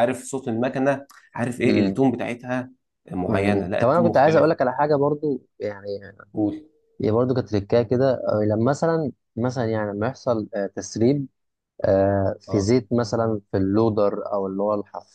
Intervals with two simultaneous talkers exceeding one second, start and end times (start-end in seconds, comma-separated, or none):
3.3-4.5